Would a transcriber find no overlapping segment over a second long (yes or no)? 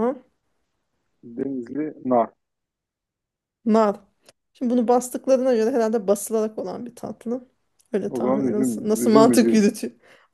no